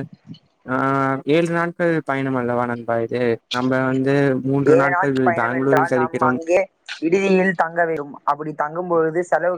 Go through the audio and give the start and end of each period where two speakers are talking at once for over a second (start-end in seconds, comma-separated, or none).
4.8-6.4